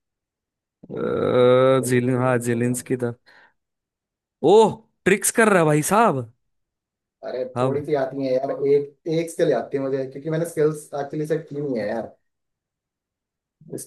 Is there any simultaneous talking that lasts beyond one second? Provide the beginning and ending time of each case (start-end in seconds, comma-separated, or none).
1.0-2.7